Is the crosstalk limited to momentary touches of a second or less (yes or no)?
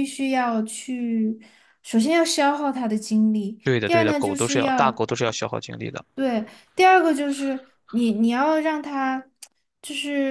no